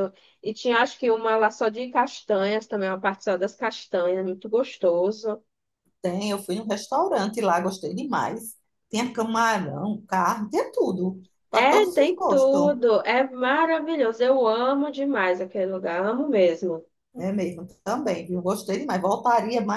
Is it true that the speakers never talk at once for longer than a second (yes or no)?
no